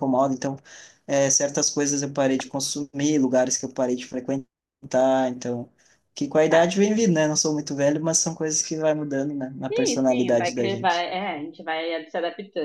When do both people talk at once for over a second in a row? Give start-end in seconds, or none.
9.7-11.1